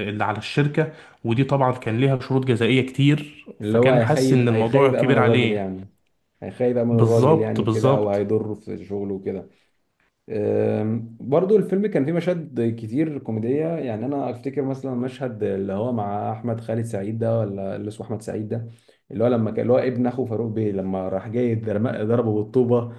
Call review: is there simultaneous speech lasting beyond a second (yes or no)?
yes